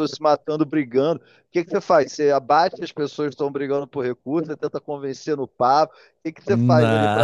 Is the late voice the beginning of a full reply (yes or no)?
no